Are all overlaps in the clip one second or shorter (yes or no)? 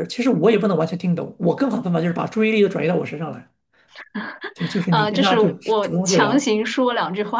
no